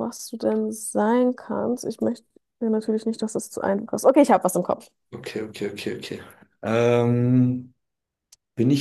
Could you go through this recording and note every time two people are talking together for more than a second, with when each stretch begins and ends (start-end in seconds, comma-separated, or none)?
none